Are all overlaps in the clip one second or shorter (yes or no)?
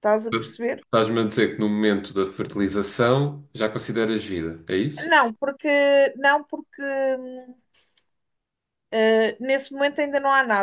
yes